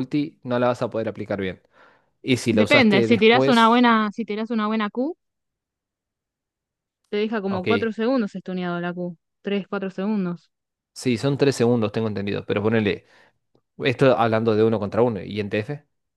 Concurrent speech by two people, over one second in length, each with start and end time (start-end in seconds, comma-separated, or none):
2.5-3.8